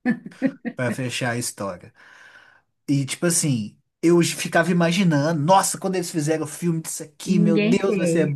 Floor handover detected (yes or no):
no